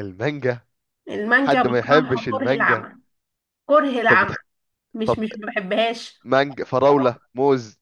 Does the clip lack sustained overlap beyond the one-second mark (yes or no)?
no